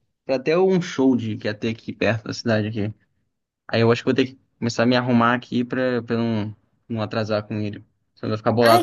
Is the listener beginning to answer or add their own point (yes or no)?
yes